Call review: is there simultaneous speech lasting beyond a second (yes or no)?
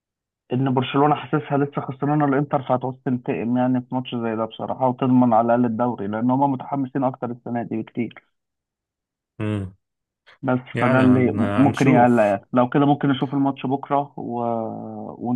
yes